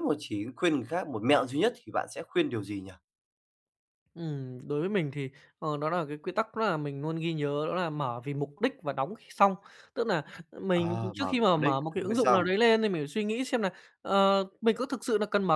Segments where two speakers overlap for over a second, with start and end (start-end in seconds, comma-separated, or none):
10.7-12.5